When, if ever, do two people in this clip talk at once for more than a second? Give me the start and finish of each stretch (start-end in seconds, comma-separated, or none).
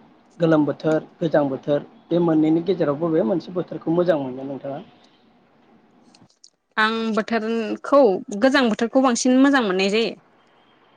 none